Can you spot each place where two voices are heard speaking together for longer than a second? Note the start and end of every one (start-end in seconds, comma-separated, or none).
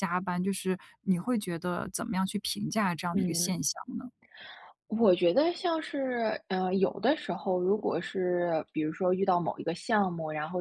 none